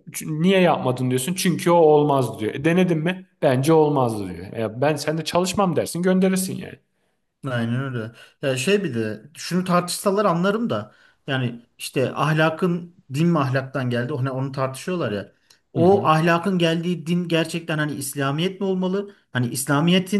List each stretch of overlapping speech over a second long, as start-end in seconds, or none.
none